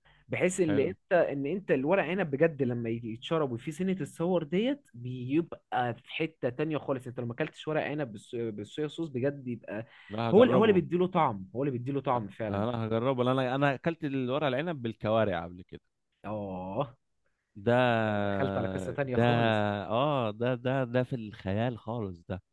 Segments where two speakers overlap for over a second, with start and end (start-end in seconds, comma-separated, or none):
none